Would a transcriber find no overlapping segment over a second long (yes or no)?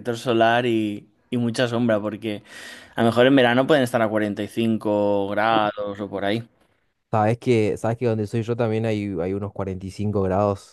yes